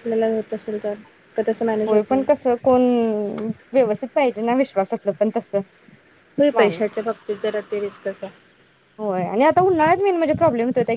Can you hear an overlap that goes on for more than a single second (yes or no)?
no